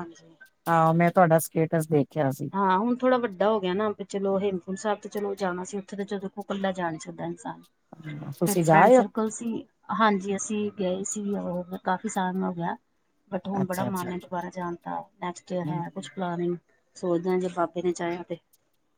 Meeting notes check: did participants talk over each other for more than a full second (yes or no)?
no